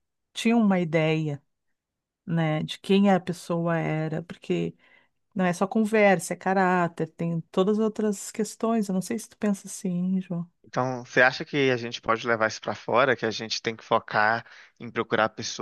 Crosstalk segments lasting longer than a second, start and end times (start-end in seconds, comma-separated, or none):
none